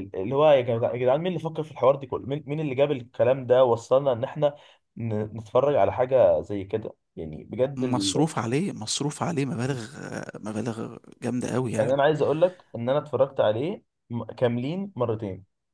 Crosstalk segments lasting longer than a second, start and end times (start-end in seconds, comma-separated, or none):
none